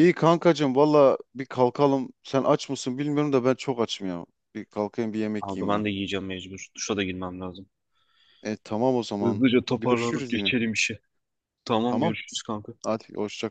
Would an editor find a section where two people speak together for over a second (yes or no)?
yes